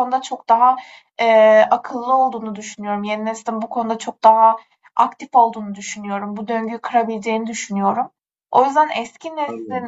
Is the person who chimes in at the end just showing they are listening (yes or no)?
yes